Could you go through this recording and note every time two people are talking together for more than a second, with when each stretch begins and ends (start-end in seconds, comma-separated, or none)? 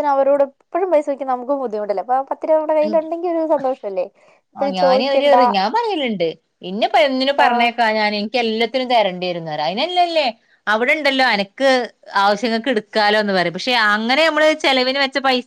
none